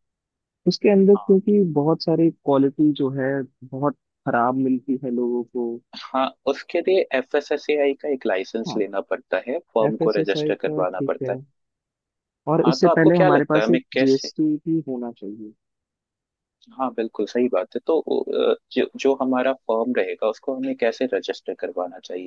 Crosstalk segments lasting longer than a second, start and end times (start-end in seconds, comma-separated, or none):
9.9-11.4, 12.6-14.3